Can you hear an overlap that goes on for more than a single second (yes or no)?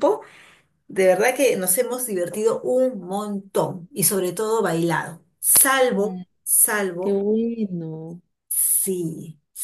no